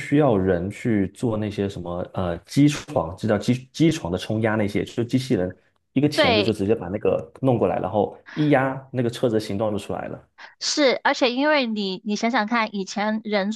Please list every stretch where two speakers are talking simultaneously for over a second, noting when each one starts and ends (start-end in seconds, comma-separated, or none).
none